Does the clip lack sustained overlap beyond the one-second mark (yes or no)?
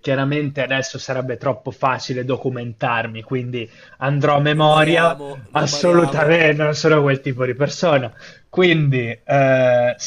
no